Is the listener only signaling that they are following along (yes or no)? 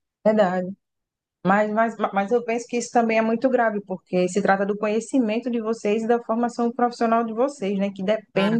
no